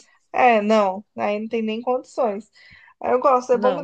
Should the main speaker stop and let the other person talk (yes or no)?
no